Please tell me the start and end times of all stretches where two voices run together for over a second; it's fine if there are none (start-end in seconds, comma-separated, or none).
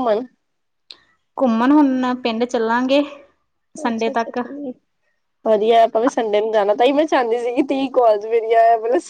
none